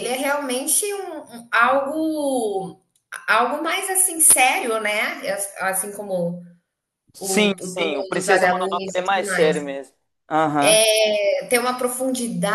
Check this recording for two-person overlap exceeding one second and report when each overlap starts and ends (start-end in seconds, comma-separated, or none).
7.2-9.6